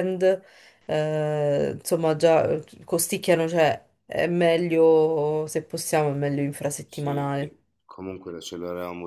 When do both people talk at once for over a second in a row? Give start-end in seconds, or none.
none